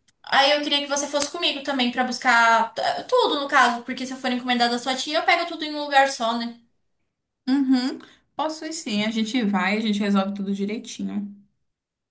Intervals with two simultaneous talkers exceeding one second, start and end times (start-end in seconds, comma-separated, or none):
none